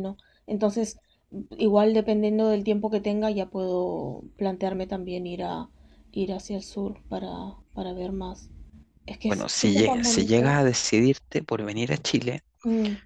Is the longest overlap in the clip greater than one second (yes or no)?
yes